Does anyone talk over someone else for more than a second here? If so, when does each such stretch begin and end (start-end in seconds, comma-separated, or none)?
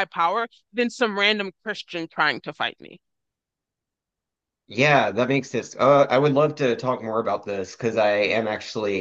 none